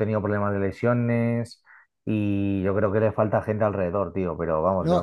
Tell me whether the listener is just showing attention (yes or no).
no